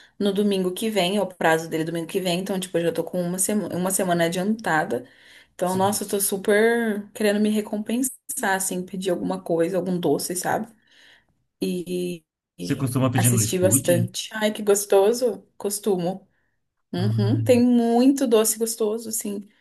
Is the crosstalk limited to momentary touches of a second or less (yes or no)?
no